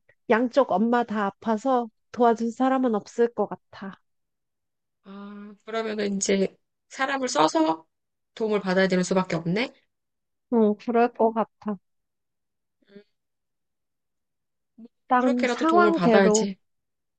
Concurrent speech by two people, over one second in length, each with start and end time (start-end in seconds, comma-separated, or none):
15.2-16.5